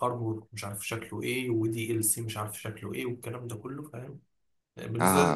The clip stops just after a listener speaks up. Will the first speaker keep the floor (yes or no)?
no